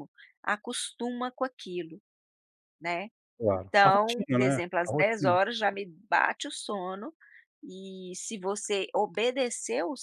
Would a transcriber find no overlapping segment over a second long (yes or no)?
no